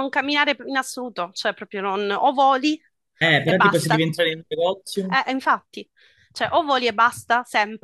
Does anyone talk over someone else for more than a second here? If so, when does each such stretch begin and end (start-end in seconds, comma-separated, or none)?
none